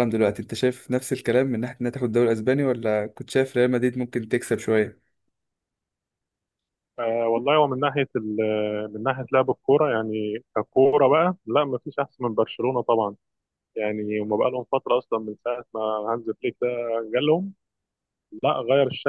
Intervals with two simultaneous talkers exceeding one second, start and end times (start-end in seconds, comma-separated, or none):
none